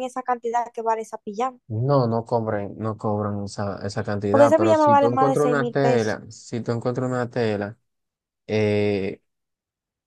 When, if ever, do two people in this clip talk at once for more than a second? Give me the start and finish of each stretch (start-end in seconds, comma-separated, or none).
4.3-6.2